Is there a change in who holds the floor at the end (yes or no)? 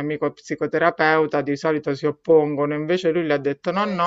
no